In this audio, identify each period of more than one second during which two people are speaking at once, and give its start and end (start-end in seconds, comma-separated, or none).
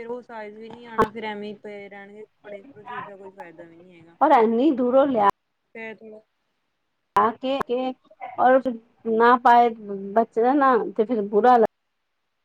none